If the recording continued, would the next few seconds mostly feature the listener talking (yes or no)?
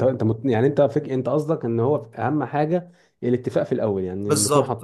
yes